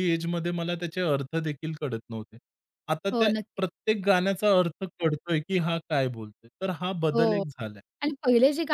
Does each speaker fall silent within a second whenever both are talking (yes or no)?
yes